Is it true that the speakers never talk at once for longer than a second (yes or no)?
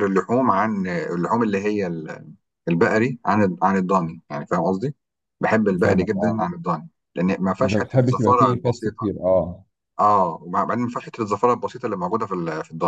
no